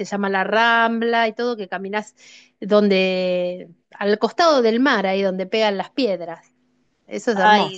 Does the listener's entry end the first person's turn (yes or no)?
yes